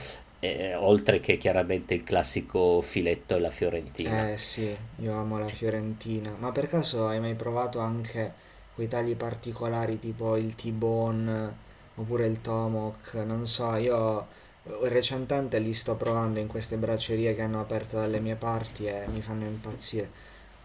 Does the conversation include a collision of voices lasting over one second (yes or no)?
no